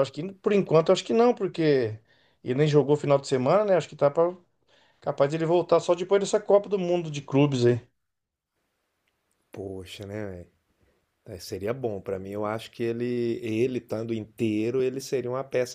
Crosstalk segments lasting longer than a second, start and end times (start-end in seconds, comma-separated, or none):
none